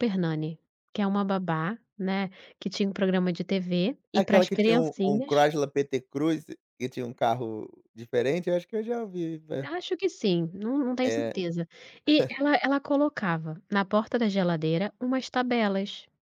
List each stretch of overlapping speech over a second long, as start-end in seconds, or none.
4.1-5.5